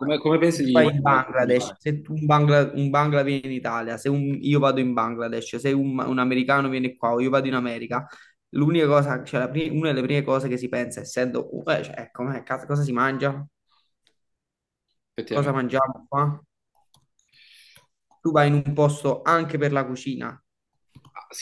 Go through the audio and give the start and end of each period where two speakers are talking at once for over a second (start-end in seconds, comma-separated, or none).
0.5-1.8